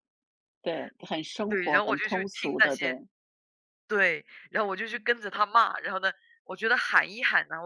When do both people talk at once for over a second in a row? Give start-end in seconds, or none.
1.5-2.9